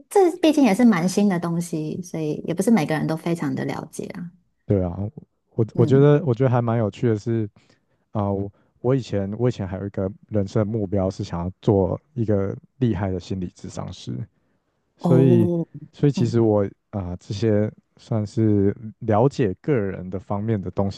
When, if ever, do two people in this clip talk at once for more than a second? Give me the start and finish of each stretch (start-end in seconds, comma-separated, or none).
none